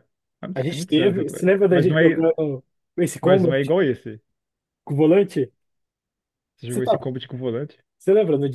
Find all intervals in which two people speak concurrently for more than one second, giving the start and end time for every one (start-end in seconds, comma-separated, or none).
0.5-2.3